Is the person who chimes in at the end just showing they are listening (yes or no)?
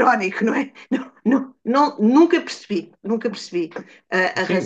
no